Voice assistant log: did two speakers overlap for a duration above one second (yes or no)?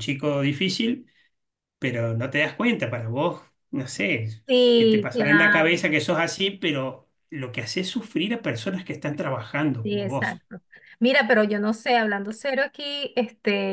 yes